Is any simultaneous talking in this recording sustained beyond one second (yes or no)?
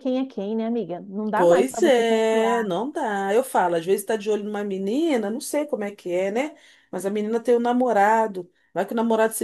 yes